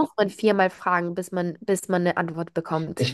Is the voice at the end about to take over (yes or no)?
no